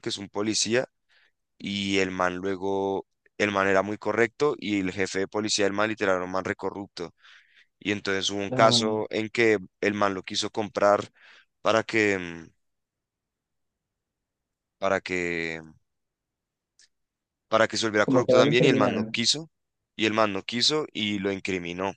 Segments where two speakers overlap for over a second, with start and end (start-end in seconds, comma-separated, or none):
18.0-19.2